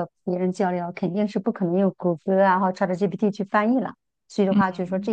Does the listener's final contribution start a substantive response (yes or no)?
no